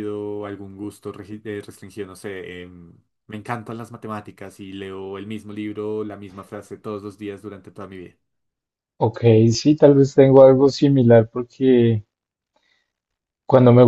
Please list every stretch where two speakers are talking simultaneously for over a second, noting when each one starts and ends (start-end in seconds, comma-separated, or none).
none